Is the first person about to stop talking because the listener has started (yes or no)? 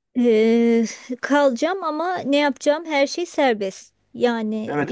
no